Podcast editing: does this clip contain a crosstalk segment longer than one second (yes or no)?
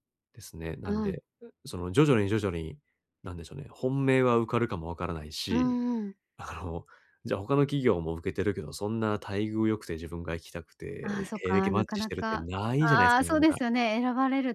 yes